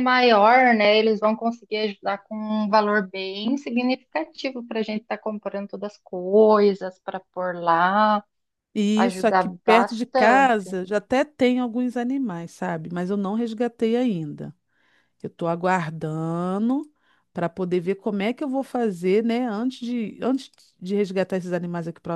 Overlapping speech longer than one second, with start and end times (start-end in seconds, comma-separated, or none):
9.0-10.7